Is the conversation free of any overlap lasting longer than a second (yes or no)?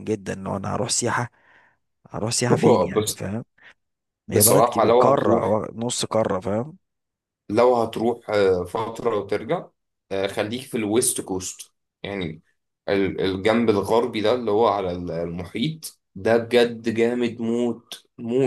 no